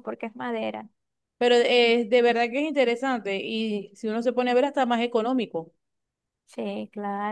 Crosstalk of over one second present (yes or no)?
no